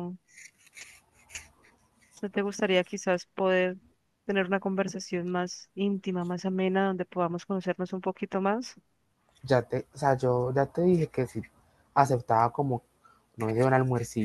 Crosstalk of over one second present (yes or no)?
no